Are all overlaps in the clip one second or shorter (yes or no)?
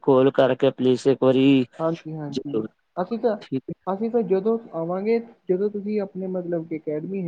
yes